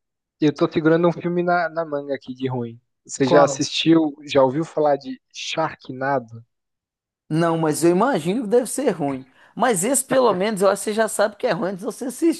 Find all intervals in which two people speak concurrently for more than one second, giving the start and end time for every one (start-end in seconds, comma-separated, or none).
none